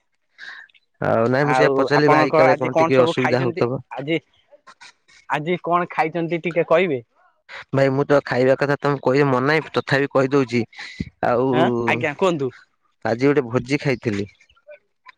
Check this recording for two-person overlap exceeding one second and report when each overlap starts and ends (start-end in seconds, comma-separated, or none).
1.5-3.7